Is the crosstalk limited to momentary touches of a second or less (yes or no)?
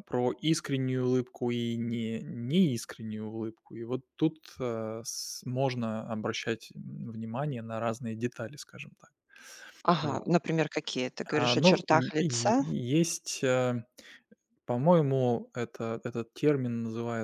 no